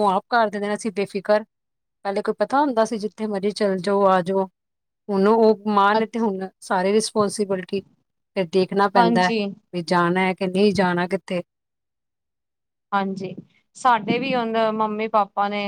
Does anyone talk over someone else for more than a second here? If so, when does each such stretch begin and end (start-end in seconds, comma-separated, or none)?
none